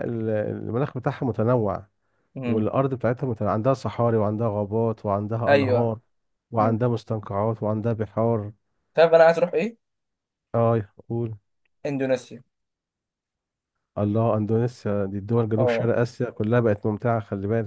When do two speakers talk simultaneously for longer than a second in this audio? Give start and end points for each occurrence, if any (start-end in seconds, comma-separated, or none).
none